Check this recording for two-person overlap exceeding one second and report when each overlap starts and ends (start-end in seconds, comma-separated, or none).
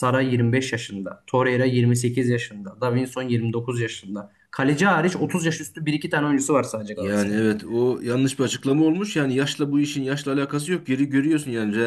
none